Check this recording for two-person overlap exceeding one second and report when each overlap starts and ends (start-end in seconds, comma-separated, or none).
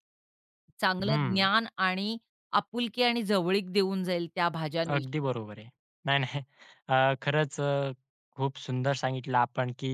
none